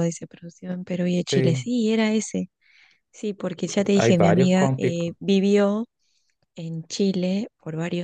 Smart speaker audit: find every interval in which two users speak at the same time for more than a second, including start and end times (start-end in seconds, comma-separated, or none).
4.0-5.2